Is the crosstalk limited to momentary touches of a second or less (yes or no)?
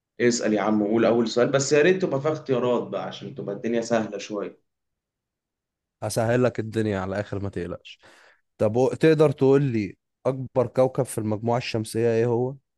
yes